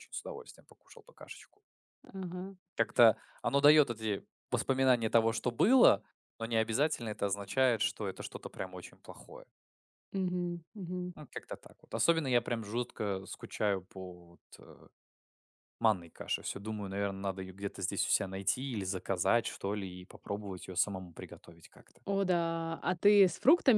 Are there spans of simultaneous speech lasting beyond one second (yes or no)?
no